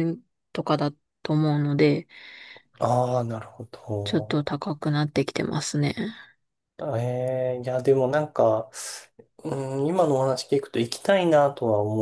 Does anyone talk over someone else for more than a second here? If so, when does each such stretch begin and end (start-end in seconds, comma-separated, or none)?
none